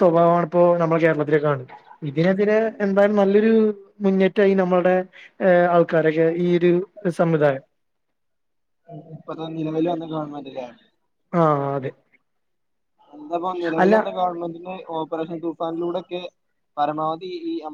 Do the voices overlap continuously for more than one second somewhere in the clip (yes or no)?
no